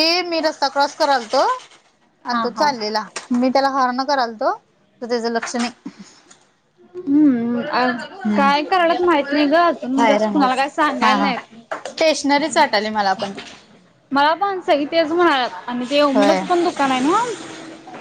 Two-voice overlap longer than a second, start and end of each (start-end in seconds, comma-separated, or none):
9.9-11.3